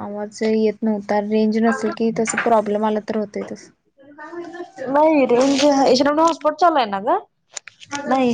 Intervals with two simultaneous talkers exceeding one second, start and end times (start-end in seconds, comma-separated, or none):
none